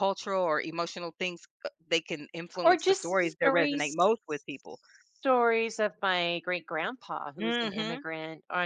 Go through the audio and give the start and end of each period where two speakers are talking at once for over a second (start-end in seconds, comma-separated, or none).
2.6-4.0